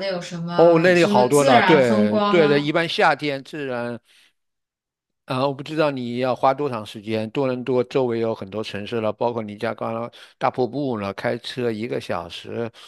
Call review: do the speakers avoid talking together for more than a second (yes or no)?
no